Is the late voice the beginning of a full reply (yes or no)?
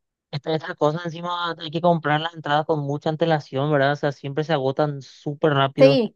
yes